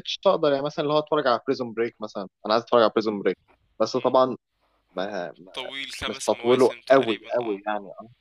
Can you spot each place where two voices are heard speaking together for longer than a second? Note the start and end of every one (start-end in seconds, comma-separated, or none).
6.1-7.6